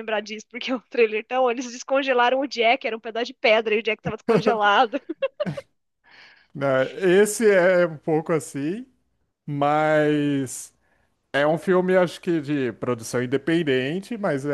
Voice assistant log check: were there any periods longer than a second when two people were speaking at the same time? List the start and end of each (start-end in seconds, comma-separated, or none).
none